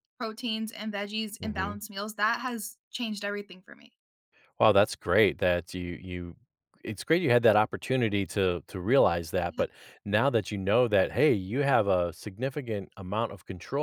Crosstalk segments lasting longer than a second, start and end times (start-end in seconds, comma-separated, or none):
none